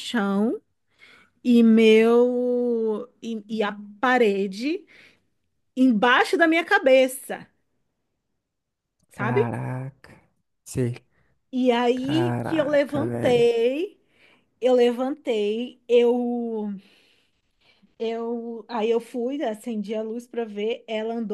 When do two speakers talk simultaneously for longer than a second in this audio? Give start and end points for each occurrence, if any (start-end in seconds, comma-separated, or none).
11.9-13.5